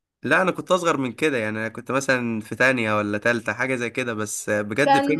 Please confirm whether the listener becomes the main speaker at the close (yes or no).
yes